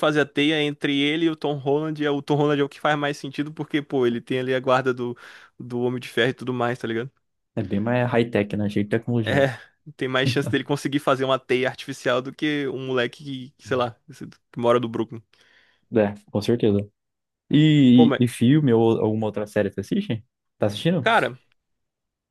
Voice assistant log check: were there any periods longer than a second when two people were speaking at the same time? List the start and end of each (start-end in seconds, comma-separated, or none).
none